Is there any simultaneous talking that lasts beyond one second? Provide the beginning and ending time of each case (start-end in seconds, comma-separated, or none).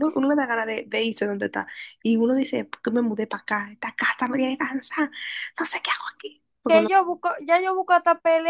none